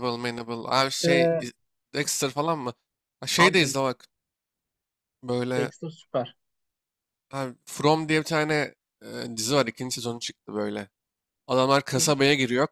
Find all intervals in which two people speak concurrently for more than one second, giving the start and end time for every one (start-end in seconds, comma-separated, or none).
none